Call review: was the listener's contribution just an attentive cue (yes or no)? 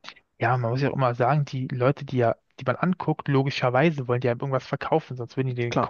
yes